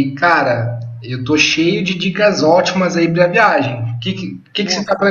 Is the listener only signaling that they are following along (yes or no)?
yes